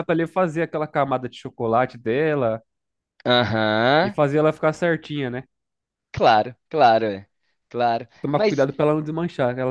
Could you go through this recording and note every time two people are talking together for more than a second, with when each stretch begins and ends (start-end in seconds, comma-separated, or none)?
none